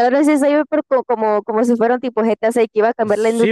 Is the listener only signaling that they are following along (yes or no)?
no